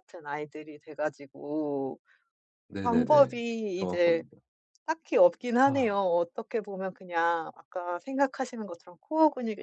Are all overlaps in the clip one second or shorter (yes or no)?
no